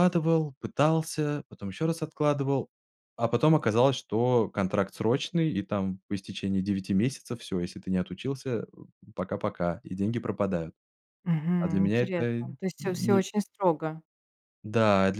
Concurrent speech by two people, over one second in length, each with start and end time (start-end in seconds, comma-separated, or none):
11.6-13.3